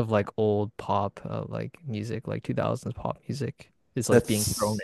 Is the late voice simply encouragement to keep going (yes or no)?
yes